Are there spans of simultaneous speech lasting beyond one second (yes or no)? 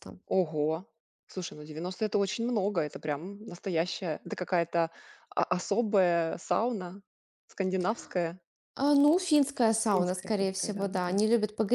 yes